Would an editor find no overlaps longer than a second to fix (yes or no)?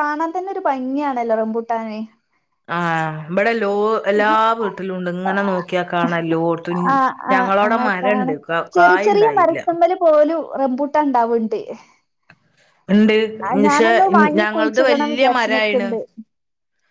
no